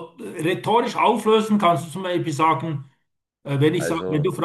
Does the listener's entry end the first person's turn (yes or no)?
no